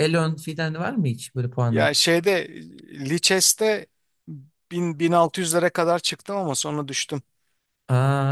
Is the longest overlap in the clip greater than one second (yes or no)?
no